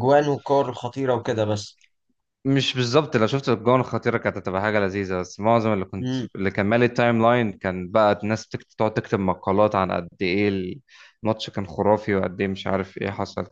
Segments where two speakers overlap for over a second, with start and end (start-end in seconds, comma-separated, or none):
none